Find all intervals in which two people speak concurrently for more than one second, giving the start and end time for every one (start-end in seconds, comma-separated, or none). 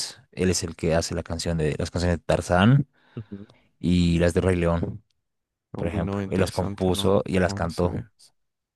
5.8-8.1